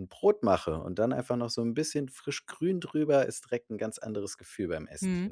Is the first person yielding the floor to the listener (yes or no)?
yes